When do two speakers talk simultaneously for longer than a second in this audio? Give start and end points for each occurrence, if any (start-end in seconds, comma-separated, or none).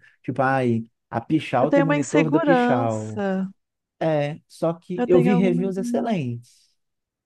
1.6-3.2, 5.0-6.2